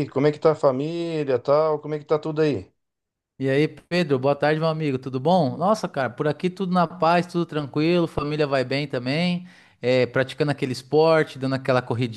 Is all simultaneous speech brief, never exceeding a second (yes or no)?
yes